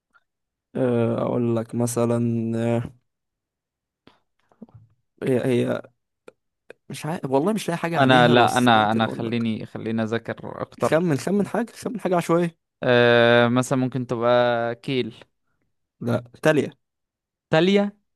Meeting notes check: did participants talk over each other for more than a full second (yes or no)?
yes